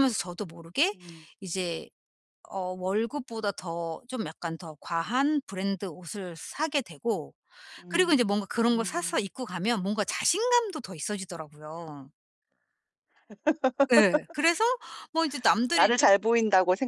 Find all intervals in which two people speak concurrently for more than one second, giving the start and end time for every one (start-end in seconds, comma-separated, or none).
7.9-9.3